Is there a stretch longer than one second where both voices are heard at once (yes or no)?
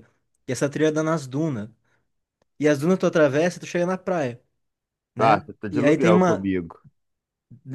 yes